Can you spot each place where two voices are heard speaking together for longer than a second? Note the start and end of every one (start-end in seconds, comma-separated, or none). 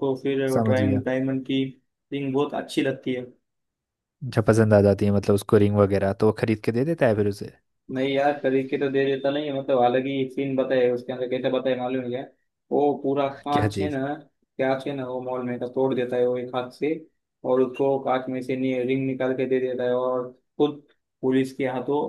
none